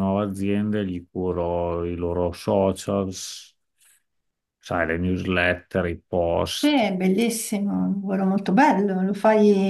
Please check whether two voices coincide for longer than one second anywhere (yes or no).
no